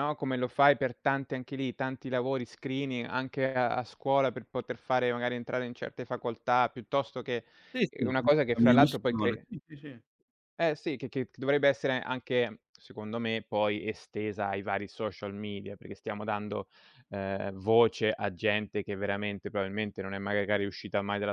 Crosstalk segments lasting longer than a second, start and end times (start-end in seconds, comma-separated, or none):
7.9-9.5